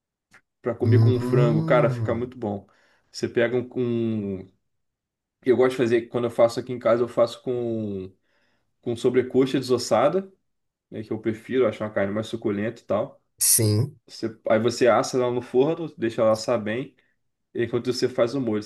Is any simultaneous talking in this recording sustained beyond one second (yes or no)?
yes